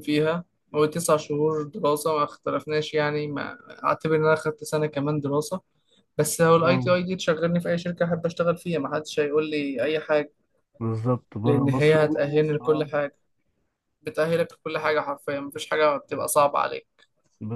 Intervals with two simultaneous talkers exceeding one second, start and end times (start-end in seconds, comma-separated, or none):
11.4-12.9